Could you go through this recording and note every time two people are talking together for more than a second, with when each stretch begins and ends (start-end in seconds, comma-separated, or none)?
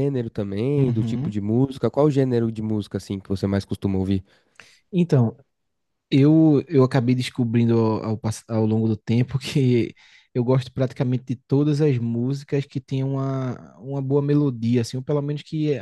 none